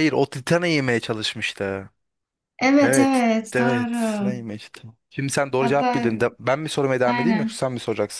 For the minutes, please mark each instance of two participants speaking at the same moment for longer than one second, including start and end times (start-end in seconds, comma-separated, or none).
2.8-4.3